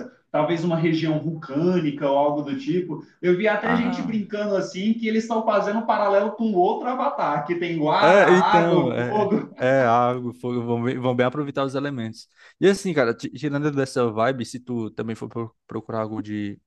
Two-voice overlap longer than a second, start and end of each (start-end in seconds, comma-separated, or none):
8.0-9.5